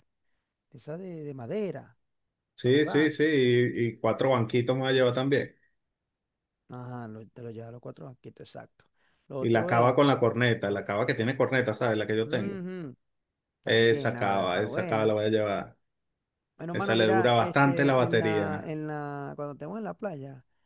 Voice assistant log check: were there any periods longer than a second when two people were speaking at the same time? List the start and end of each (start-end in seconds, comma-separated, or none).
13.7-15.1, 16.7-18.7